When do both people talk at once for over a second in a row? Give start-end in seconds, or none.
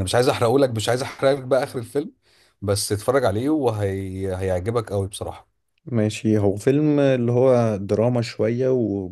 none